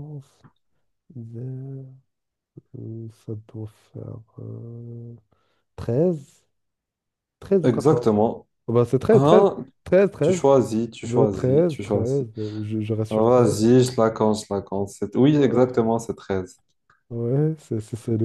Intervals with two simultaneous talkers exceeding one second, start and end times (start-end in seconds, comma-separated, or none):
11.0-12.3